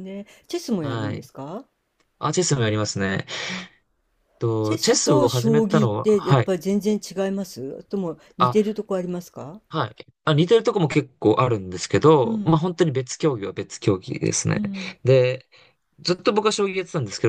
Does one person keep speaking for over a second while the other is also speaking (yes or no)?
yes